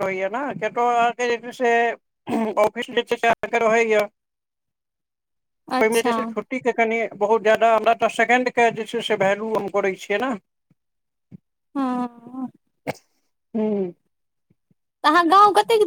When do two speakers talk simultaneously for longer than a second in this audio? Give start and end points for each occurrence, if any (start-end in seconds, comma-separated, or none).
none